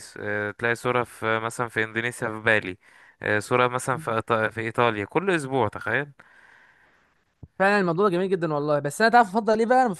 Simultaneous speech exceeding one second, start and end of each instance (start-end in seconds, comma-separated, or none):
none